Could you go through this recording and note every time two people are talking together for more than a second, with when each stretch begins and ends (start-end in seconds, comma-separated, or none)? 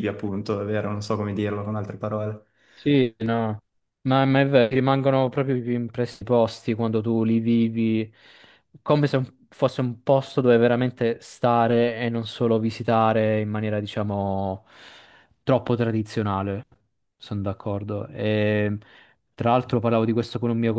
none